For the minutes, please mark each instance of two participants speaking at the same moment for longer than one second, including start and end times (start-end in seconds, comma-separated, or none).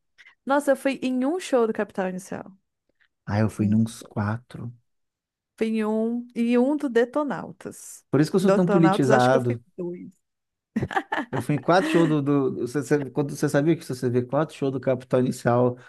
8.4-9.6